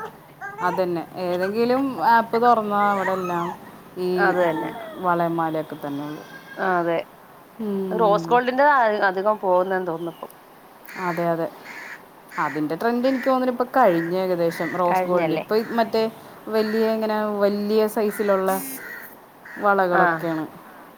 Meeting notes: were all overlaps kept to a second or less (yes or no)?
yes